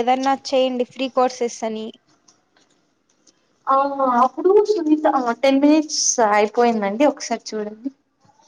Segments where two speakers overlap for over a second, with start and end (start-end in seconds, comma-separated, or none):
none